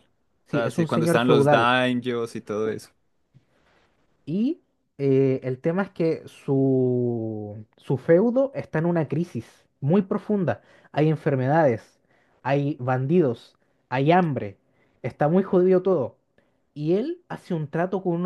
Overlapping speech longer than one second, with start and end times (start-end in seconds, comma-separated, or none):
0.5-1.7